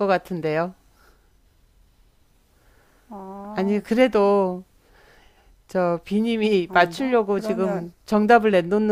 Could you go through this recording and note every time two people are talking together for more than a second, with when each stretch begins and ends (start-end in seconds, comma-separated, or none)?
6.7-7.9